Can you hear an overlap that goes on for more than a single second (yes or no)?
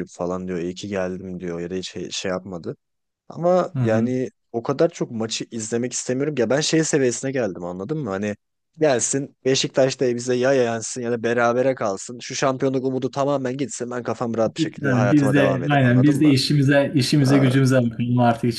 yes